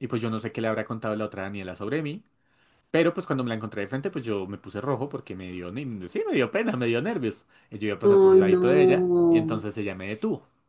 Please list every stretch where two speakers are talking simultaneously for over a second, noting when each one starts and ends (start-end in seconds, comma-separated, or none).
8.1-9.6